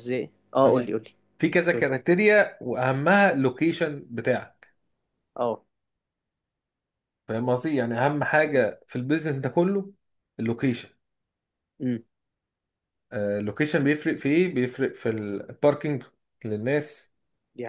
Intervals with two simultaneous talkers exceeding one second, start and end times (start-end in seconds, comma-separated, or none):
none